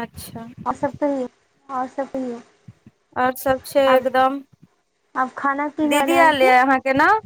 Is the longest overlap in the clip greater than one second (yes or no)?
no